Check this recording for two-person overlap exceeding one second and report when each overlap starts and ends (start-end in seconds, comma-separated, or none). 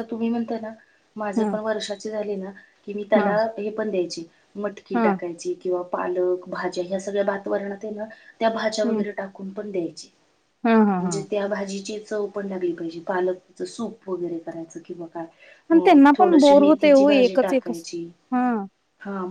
15.8-17.9